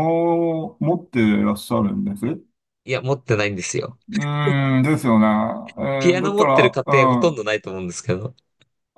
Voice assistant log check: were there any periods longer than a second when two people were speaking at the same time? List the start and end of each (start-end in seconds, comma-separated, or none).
6.0-7.5